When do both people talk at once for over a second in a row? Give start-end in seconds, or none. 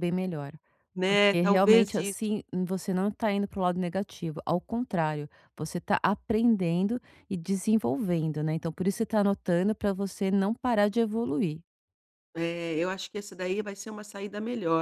1.1-2.3